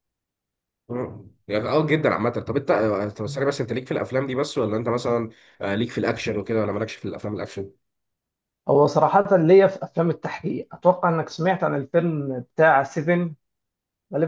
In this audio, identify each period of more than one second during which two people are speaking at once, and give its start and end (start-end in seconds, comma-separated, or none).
none